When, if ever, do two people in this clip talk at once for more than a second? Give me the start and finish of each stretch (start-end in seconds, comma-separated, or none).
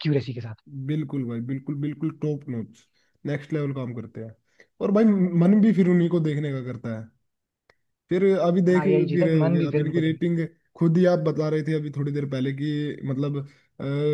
8.7-10.2